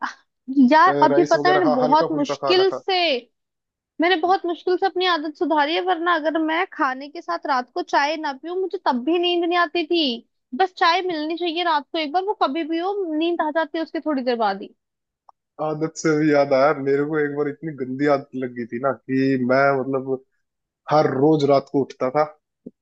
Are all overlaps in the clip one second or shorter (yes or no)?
no